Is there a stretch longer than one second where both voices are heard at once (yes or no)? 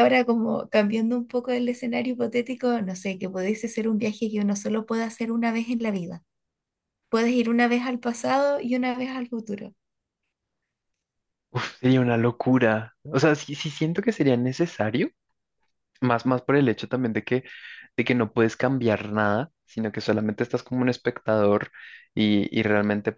no